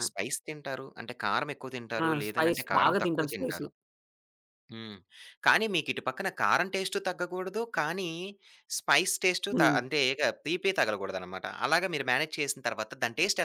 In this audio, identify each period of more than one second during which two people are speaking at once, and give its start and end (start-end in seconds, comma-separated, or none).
2.0-3.6